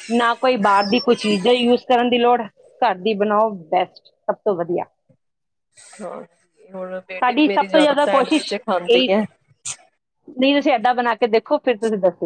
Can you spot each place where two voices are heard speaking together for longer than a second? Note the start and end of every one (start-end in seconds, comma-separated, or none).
7.2-9.1